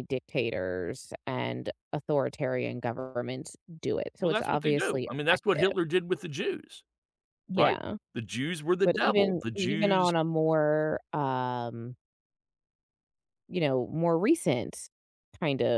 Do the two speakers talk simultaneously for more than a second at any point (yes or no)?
yes